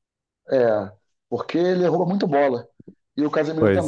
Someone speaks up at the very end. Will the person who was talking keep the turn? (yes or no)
yes